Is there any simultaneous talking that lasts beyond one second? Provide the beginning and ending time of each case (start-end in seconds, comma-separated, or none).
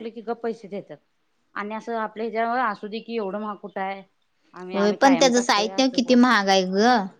4.8-6.4